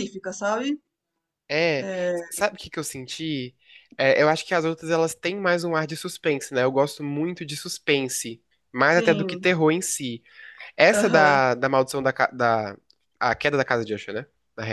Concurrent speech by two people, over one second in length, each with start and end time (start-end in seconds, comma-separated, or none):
none